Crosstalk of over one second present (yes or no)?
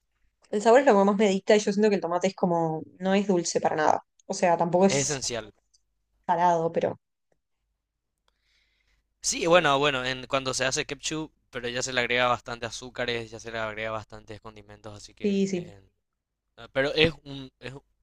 no